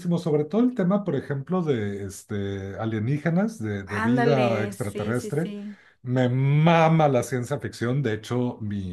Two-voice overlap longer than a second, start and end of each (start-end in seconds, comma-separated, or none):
3.9-5.5